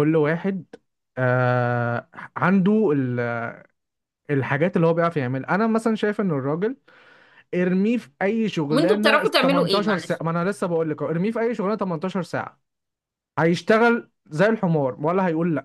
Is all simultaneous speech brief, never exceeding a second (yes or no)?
no